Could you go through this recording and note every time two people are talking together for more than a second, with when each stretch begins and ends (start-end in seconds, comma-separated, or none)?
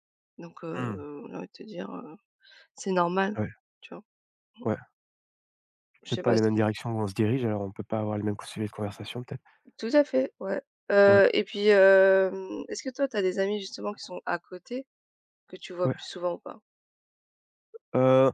none